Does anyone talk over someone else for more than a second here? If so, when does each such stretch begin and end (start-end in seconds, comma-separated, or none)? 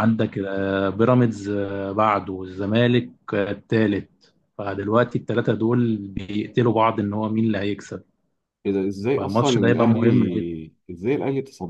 9.1-10.5